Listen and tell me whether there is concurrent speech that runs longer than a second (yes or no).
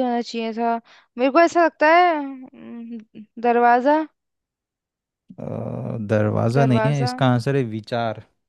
no